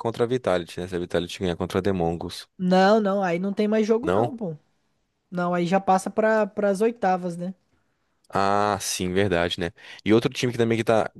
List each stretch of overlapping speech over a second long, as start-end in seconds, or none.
none